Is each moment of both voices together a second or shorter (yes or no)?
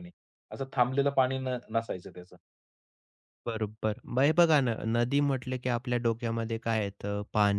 yes